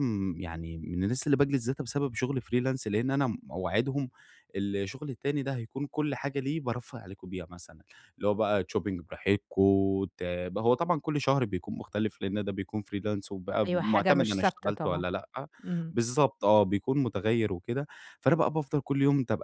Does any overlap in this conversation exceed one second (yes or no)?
yes